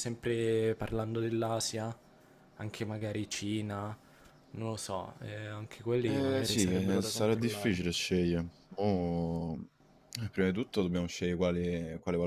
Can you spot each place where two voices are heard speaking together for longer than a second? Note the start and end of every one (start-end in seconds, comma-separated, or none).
6.0-7.8